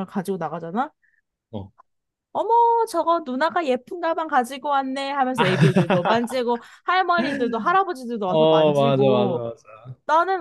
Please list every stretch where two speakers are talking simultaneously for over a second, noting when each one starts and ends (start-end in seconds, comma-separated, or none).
8.3-9.5